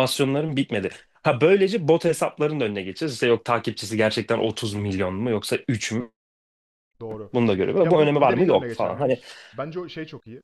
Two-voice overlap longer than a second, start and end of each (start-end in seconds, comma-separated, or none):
7.8-9.2